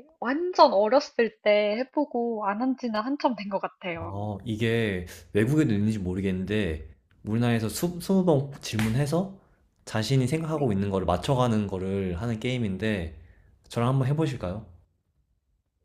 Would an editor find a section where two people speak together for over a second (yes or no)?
no